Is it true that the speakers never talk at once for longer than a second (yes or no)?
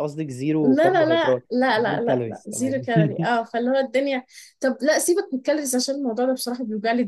no